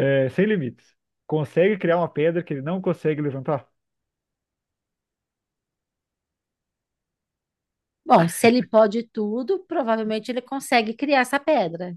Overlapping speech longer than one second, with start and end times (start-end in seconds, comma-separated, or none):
none